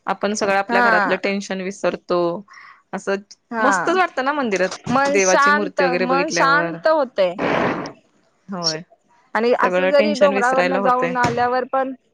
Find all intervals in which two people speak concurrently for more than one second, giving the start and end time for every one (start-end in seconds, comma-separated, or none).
9.6-11.2